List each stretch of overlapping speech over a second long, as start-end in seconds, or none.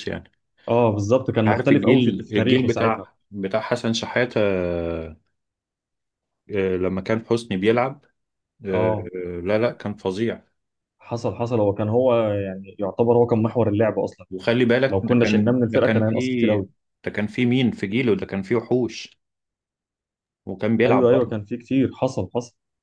1.5-3.1, 14.9-16.1